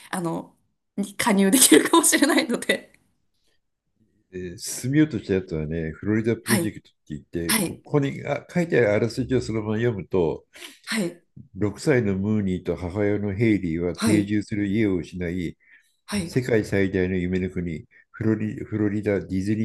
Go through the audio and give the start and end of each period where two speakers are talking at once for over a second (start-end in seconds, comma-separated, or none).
none